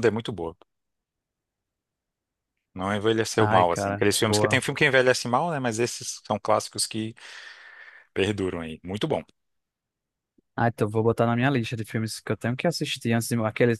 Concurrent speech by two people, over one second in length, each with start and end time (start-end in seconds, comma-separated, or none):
3.4-4.6